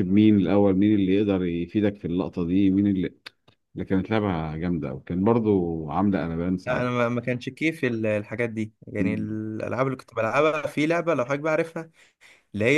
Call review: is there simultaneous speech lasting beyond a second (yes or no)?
no